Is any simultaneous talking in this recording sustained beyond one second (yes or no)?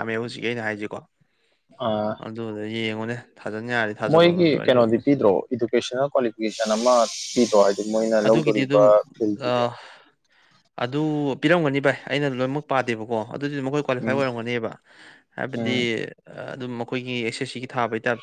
no